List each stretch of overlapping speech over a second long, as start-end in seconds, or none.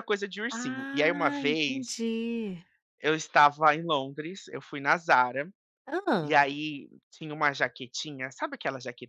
0.5-2.0